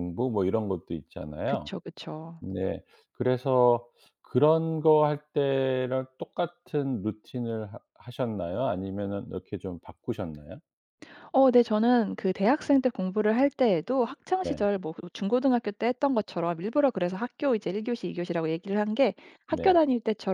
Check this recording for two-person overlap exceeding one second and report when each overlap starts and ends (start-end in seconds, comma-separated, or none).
none